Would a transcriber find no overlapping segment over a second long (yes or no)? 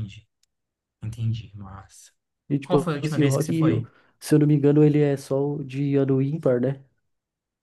no